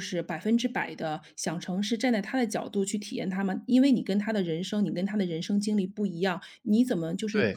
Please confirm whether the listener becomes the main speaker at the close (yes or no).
no